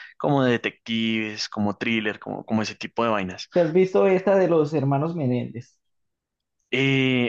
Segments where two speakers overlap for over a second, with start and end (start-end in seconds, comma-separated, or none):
none